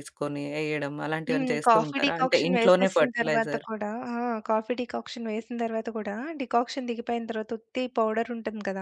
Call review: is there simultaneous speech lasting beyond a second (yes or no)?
yes